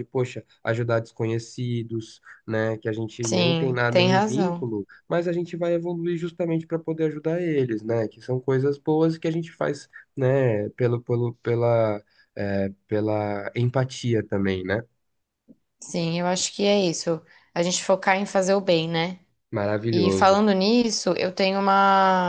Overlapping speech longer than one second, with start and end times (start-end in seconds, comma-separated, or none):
3.2-4.7